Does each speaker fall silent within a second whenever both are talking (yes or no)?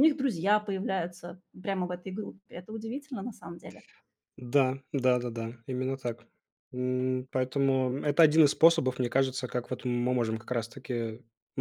yes